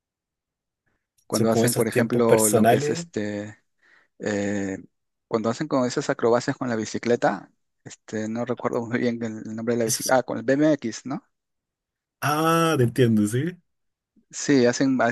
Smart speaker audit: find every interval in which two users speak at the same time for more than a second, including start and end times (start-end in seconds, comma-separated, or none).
1.3-3.1